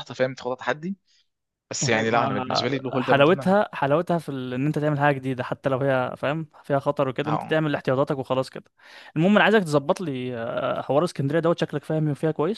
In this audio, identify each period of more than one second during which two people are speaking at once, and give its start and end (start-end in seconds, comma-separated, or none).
1.8-3.6